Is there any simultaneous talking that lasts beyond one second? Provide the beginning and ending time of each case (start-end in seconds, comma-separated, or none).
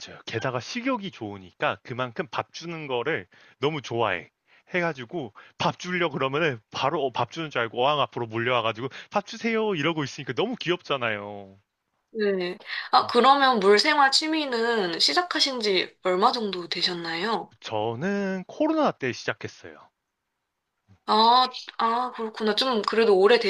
none